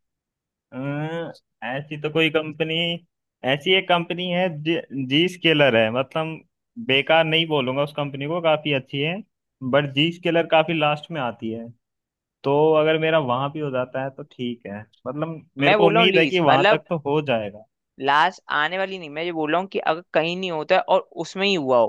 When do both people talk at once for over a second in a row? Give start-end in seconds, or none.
15.6-16.8